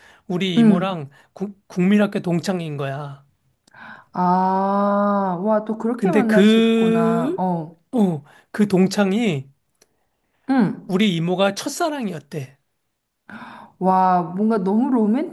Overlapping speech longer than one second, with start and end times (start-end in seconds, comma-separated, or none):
6.0-7.5